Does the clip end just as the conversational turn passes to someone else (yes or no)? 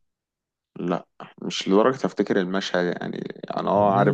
yes